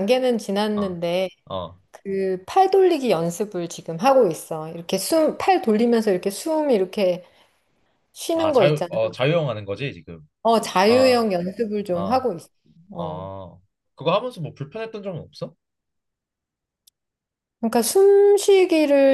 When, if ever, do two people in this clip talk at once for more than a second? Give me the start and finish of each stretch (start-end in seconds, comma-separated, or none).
none